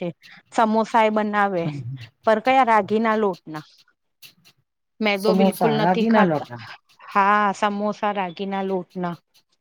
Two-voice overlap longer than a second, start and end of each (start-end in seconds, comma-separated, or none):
5.2-6.5